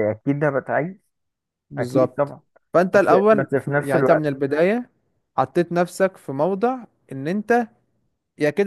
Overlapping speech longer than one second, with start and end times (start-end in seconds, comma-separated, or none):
2.9-4.3